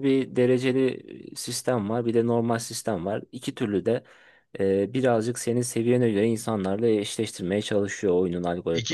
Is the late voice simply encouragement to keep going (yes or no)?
no